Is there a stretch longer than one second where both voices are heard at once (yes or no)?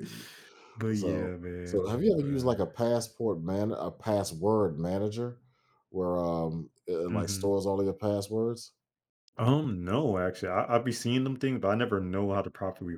yes